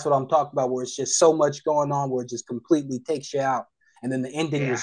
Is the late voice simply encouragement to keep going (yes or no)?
yes